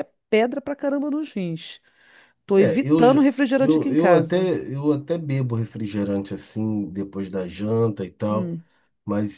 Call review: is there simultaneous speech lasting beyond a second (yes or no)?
yes